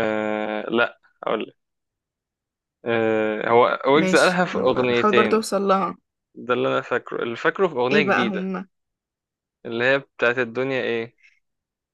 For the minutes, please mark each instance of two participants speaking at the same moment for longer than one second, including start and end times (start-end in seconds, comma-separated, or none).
3.9-5.4